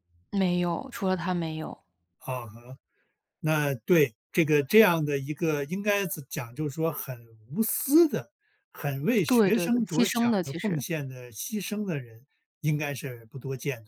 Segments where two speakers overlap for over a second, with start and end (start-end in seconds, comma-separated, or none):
9.3-10.8